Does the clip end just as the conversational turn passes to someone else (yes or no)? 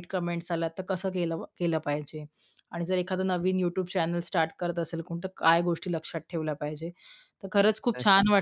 no